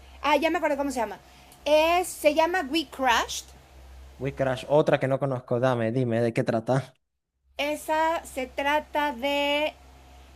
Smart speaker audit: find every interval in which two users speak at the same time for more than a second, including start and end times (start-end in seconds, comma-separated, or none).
none